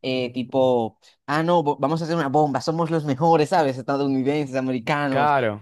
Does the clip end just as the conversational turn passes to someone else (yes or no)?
no